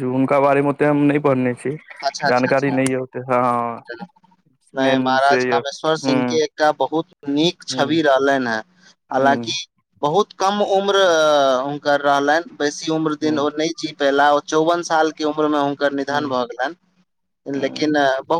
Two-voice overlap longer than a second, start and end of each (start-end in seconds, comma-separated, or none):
none